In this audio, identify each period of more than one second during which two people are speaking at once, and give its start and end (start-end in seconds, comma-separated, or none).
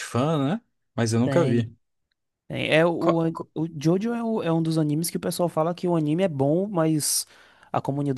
none